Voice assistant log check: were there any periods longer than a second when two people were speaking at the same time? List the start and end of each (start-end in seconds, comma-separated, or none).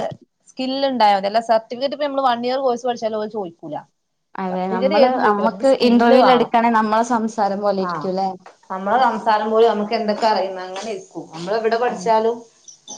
4.5-6.5